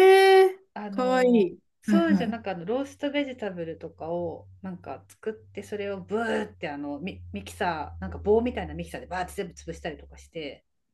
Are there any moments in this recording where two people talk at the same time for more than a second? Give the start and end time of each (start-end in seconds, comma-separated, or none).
0.7-2.4